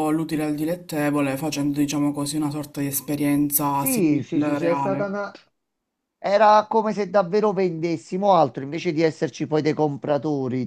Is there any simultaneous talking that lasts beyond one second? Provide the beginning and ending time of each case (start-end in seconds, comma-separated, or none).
3.8-5.1